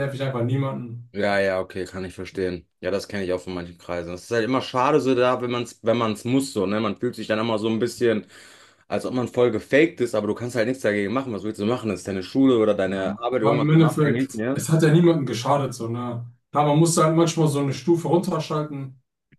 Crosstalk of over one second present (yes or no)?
yes